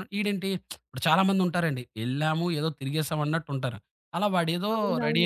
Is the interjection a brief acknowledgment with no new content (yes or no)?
no